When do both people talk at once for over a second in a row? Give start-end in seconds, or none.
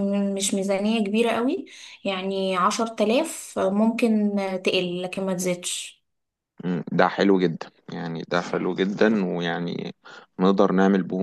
none